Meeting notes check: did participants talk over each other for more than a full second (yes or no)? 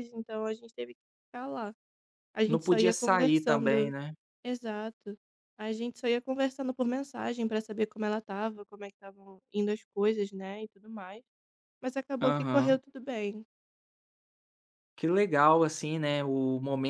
yes